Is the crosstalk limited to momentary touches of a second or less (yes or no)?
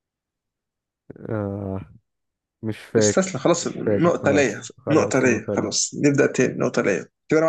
no